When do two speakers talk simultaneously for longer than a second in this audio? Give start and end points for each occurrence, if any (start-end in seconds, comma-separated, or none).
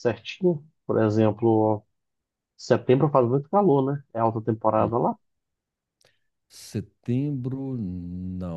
none